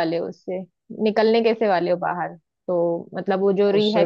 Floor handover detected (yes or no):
no